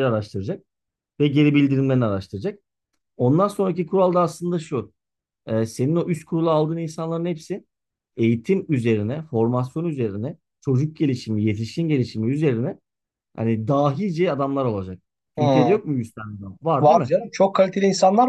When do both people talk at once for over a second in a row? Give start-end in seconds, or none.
none